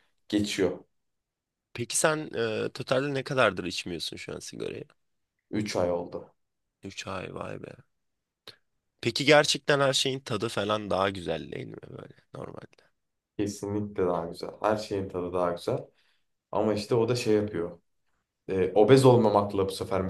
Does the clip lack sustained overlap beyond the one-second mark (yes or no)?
yes